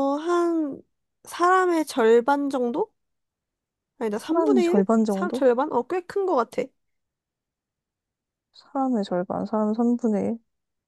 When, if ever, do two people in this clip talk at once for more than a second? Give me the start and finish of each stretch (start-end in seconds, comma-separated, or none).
4.2-5.4